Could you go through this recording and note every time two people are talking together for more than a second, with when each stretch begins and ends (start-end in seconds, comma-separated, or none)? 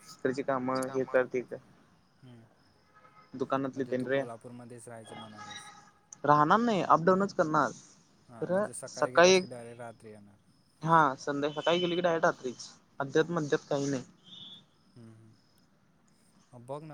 none